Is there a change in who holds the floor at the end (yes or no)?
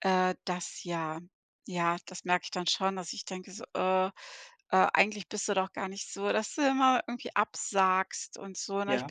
no